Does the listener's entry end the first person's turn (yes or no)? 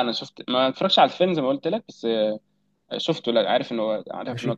yes